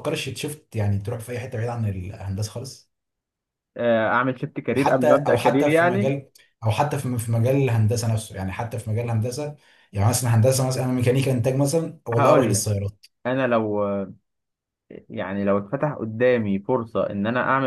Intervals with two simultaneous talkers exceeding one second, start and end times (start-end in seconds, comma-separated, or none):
4.7-6.1